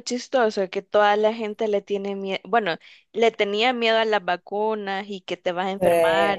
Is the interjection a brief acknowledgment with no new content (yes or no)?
yes